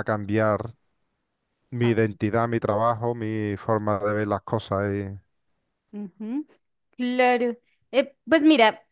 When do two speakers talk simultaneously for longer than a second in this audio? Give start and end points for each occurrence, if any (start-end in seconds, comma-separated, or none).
none